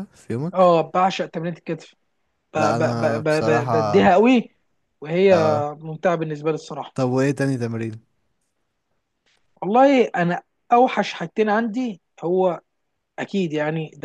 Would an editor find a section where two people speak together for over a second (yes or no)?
yes